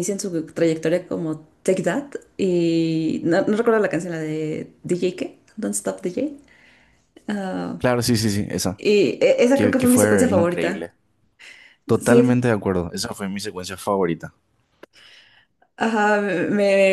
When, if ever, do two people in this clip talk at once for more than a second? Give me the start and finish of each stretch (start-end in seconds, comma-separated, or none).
9.5-10.9